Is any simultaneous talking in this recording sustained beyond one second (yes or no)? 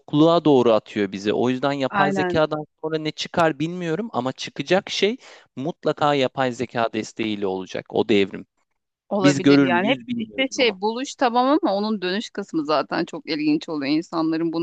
yes